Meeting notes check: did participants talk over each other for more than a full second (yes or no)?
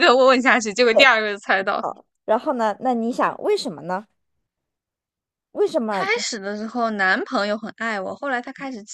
no